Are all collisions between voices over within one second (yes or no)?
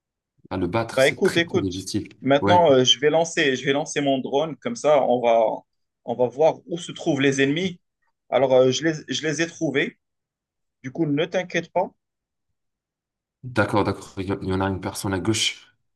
no